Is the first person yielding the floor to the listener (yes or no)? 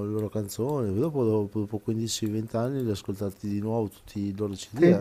yes